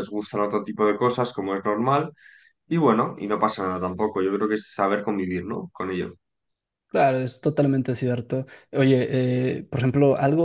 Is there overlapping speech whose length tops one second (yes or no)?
no